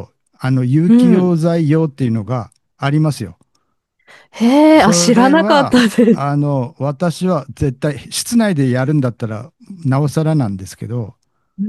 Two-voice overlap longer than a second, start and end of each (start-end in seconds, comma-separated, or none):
4.7-6.4